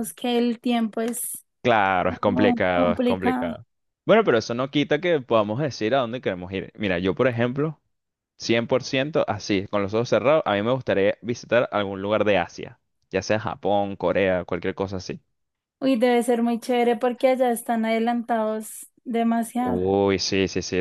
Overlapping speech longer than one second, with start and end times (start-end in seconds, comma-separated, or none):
2.0-3.5